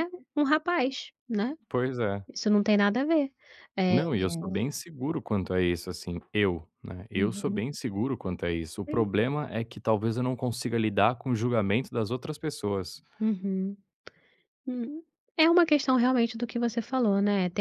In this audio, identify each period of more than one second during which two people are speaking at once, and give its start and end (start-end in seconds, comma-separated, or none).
none